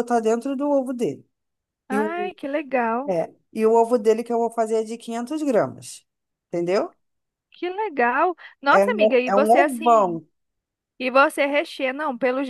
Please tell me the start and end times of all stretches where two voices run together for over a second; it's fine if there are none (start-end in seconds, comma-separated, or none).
8.7-10.2